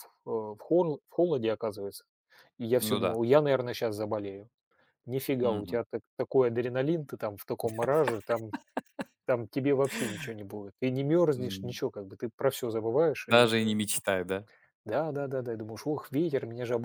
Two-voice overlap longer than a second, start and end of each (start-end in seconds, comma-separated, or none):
none